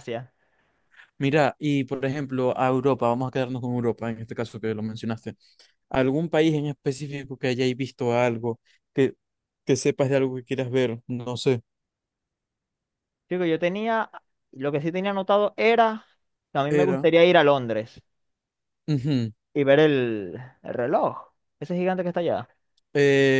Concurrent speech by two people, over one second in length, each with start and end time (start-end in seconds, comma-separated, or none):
none